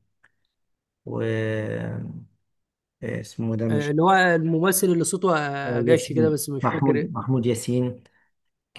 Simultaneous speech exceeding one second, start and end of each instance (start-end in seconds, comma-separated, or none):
5.7-7.1